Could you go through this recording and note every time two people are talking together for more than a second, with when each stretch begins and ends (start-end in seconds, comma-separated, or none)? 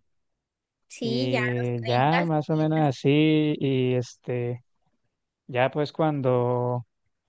1.0-2.6